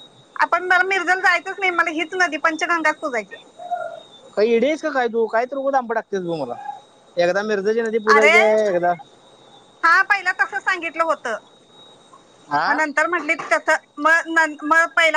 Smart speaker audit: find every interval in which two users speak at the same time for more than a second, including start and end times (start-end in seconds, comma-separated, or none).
none